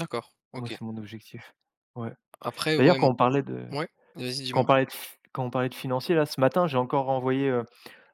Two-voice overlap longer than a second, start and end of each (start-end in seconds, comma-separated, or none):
none